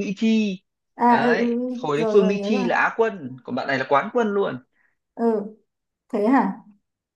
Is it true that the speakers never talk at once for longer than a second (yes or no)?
no